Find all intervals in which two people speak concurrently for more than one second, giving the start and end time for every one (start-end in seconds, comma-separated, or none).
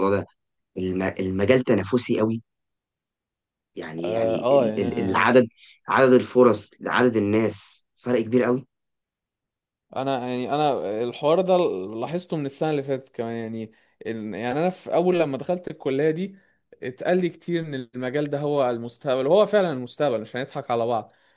4.0-5.3